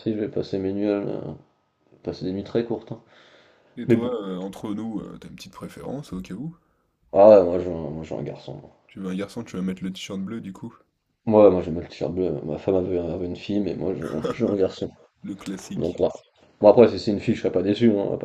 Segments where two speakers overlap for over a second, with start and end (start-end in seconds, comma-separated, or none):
none